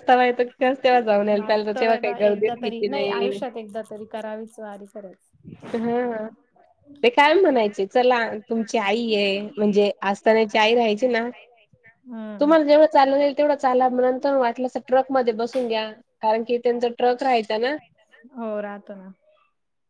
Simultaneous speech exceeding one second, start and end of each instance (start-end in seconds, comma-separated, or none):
1.4-3.3